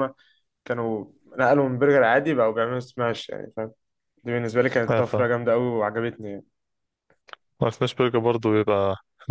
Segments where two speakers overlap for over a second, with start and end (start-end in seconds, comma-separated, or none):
none